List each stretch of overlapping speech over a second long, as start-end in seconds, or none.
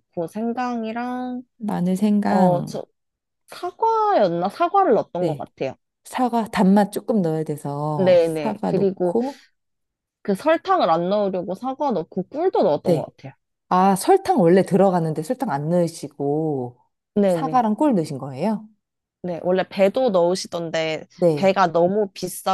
8.0-9.2